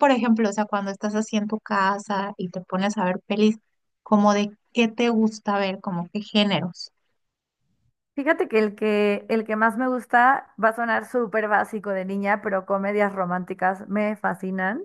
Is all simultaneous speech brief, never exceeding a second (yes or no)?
yes